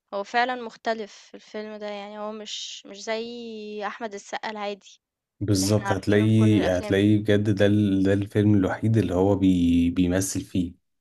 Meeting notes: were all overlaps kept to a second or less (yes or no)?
no